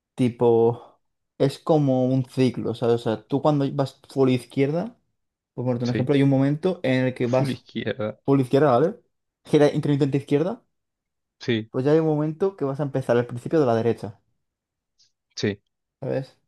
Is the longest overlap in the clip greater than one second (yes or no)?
no